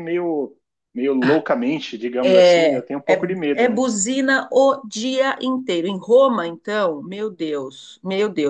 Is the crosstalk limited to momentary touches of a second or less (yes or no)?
no